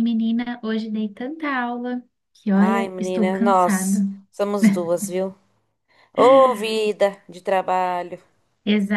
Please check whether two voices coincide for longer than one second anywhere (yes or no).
yes